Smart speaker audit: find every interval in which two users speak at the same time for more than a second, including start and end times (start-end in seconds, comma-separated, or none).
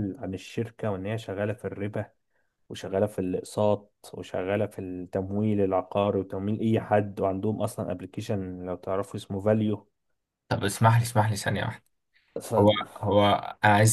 none